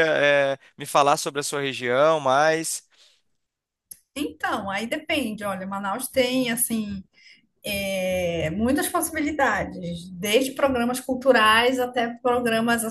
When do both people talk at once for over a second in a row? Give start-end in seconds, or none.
none